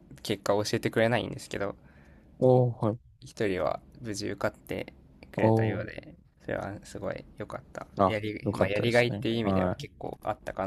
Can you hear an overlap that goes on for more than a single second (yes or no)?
yes